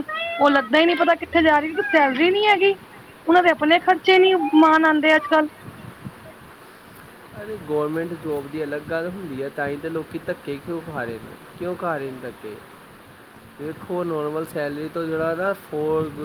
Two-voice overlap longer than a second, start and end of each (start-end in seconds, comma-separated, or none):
none